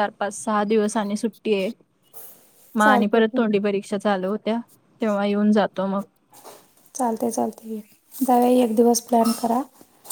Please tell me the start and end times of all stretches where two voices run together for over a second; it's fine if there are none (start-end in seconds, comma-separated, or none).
none